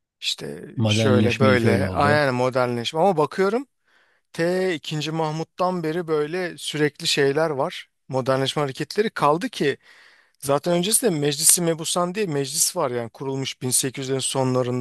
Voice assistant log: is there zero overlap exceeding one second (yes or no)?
no